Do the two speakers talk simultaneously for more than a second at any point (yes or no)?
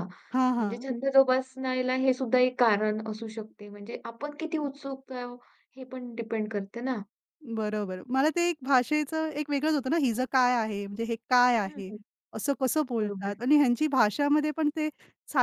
no